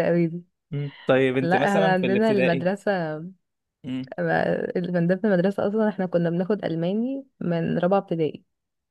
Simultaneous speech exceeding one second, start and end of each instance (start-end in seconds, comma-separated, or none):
1.4-2.7